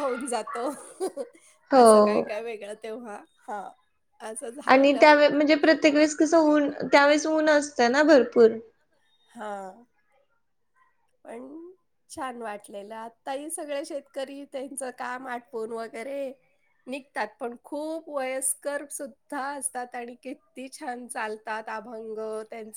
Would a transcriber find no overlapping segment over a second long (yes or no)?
yes